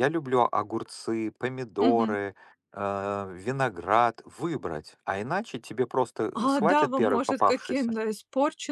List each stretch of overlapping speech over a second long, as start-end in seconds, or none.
6.3-7.9